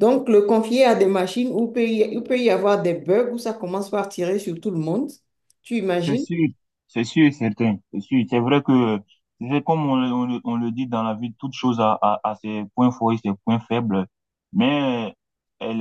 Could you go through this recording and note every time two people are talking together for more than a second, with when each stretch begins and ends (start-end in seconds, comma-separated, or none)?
none